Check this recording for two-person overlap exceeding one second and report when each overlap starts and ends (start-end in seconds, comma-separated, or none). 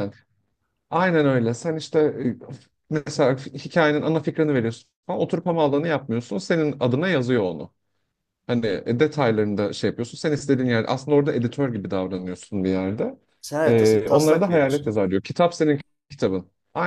13.7-15.0